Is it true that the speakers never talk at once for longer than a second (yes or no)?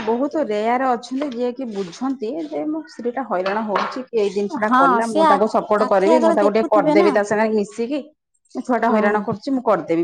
no